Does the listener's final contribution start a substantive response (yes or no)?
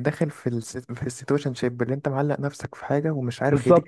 yes